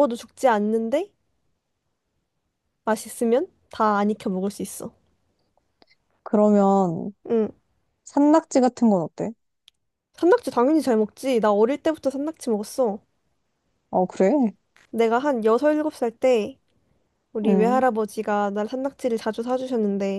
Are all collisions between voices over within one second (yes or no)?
yes